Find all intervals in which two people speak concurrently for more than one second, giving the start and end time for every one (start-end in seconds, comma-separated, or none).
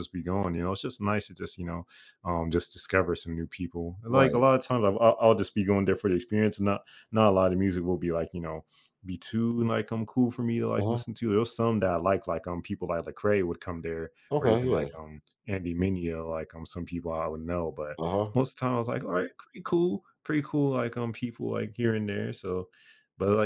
none